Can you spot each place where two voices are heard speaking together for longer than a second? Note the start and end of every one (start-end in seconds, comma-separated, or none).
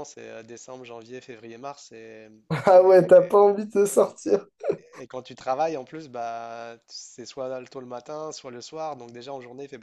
none